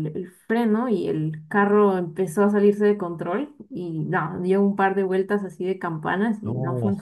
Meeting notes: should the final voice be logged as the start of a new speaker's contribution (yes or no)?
no